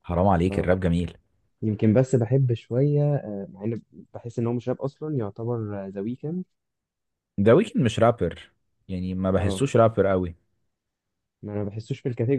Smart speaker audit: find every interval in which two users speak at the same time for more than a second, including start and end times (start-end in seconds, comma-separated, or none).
none